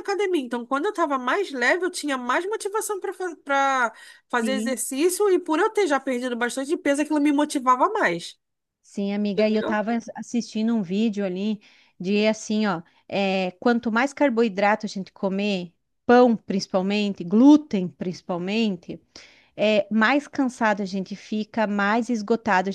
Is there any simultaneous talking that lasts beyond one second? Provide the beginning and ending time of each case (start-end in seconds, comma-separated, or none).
none